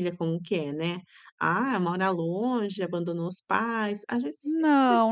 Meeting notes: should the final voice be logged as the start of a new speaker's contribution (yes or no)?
yes